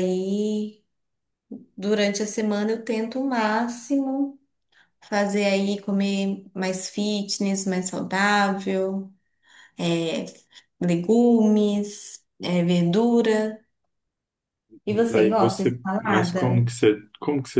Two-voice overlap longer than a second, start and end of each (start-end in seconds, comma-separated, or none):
14.9-16.7